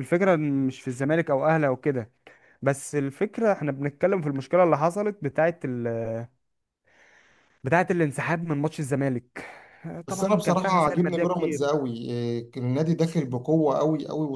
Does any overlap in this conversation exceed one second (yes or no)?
yes